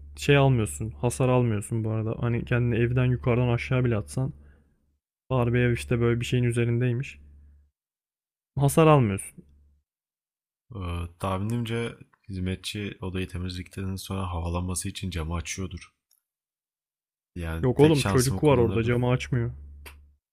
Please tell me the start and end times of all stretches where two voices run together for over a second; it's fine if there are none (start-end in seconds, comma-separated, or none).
17.6-19.0